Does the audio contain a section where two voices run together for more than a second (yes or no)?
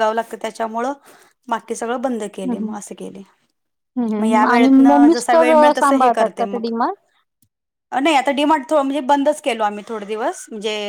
yes